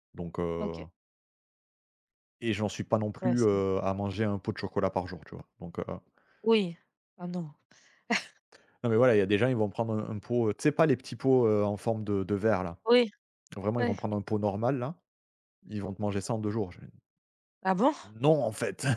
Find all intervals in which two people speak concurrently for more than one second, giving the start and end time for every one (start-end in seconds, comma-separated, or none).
none